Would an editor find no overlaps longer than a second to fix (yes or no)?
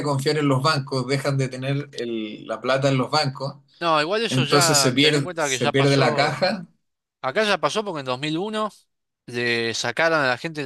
no